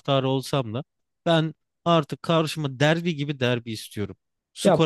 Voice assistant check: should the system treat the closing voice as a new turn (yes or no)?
no